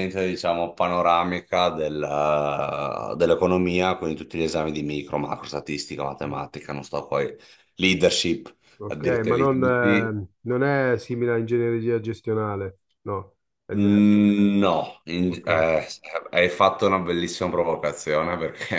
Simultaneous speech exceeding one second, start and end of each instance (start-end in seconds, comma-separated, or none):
8.8-10.2